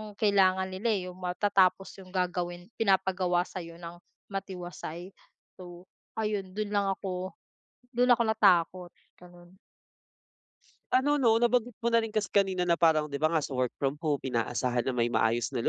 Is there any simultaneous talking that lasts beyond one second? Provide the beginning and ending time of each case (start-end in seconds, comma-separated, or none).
none